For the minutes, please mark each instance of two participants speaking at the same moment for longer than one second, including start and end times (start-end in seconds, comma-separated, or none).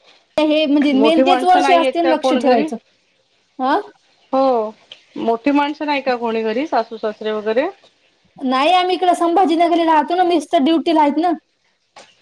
0.9-2.6